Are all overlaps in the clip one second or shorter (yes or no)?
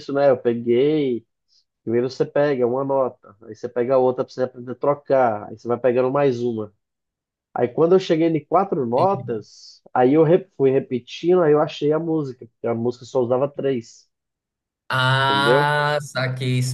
yes